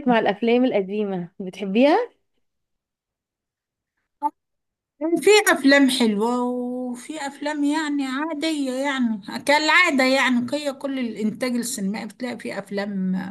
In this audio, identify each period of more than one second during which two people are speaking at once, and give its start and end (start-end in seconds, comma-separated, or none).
none